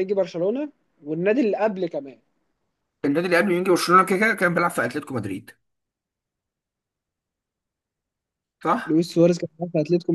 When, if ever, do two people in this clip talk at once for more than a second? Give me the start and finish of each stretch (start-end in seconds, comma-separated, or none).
none